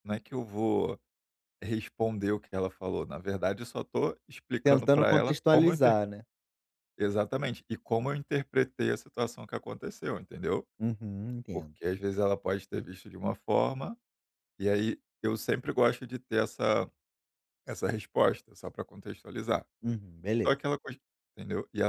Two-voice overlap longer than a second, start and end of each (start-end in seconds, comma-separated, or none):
4.6-6.0